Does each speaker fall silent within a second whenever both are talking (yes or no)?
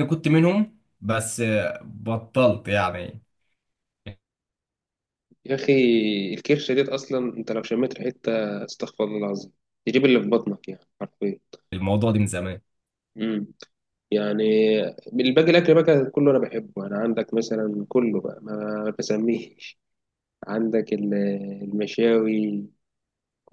yes